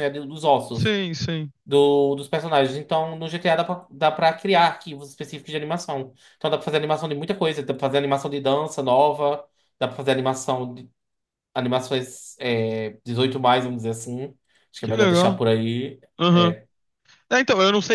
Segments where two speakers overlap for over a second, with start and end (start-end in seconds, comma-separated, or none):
none